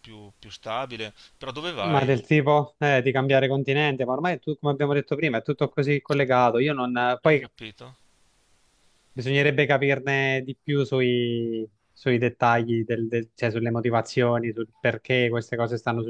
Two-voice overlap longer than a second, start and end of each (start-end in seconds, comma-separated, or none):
none